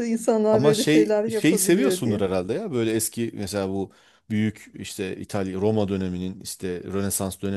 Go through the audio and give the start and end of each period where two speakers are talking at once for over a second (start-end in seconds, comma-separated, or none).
0.5-2.2